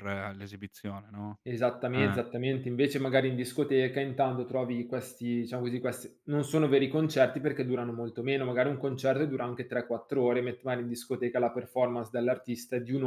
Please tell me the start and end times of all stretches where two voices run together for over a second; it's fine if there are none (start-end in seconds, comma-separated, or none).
none